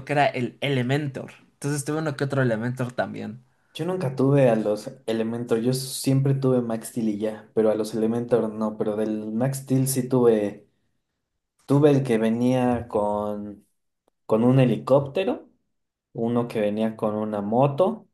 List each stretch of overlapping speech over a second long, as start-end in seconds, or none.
none